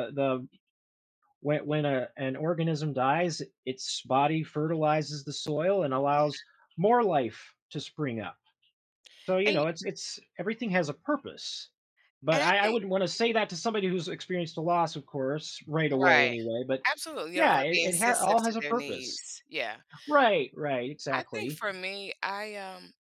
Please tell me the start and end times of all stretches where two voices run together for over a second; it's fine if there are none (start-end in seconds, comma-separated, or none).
17.4-19.2